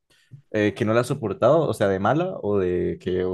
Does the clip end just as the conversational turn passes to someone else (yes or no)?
yes